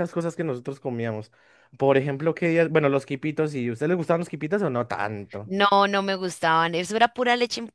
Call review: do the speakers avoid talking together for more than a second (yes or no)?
yes